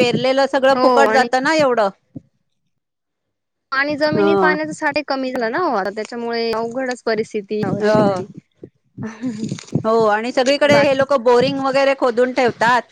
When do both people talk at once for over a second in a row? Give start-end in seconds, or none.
none